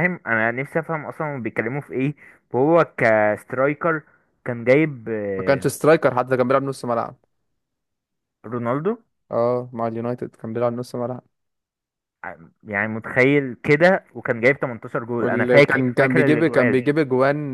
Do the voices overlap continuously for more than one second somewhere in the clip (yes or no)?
yes